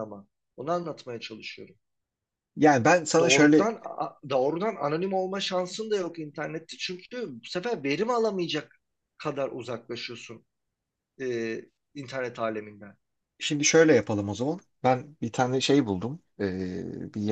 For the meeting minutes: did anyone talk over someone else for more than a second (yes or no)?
no